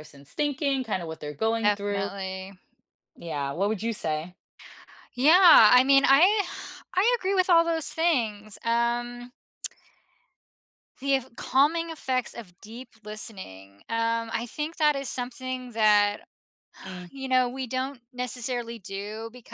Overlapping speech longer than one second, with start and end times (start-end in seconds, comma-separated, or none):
none